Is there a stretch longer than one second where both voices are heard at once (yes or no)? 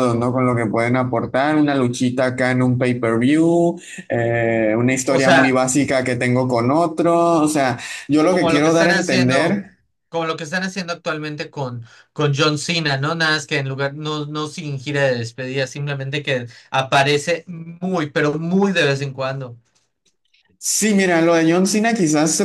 yes